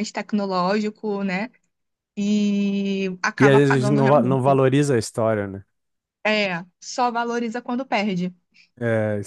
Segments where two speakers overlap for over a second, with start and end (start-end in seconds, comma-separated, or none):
3.4-4.6